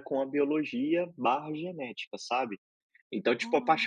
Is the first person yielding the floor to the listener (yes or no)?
no